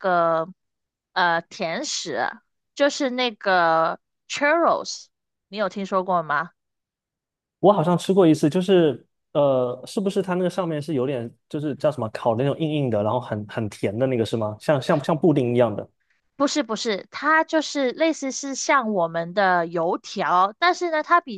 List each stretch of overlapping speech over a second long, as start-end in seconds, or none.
none